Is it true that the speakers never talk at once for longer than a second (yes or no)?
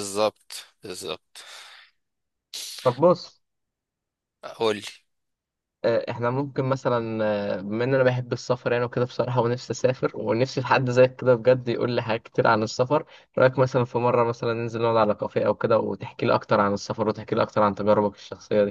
yes